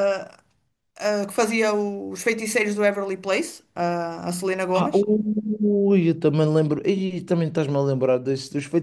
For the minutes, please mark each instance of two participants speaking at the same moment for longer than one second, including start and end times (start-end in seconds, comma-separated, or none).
none